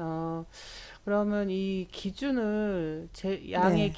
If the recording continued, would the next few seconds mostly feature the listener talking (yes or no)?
no